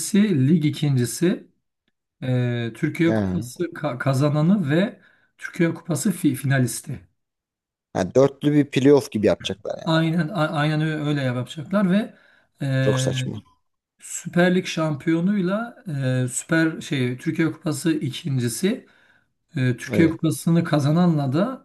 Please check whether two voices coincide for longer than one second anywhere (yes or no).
no